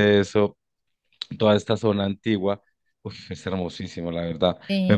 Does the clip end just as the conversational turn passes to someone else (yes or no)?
no